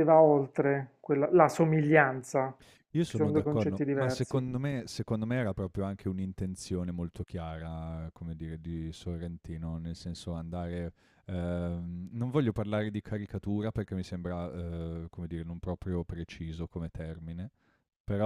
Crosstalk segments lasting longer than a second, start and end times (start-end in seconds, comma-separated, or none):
3.0-4.4